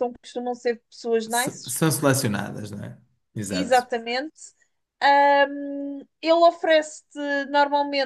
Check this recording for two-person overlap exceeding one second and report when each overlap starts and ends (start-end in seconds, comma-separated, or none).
none